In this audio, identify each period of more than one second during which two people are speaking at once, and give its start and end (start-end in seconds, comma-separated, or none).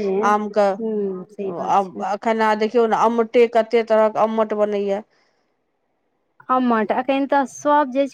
0.8-2.0